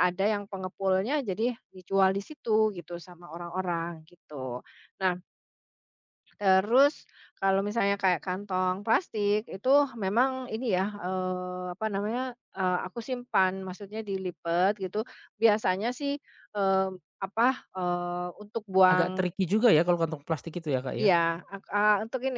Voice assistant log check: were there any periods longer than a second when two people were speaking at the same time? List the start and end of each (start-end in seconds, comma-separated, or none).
none